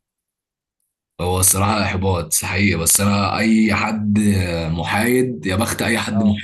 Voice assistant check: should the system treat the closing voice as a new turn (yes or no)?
no